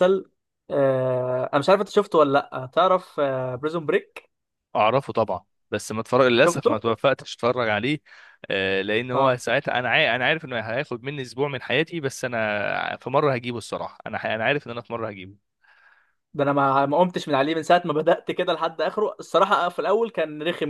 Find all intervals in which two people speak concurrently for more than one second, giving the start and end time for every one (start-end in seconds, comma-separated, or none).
none